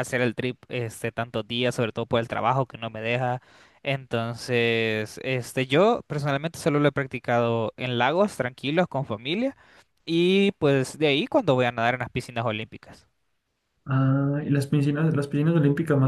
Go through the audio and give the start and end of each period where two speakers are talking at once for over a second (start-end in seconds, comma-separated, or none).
none